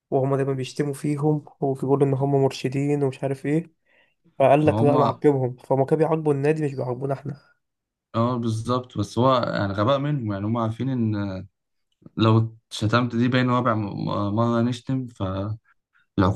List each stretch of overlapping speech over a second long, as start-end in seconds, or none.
none